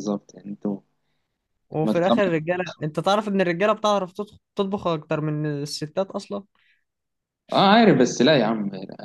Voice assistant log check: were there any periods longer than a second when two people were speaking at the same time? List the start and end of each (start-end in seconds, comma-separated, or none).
none